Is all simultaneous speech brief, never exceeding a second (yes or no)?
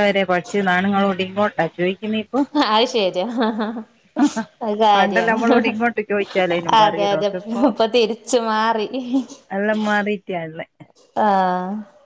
yes